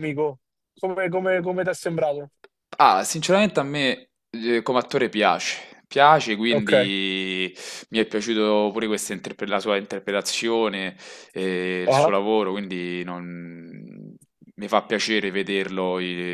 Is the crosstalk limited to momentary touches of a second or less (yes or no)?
yes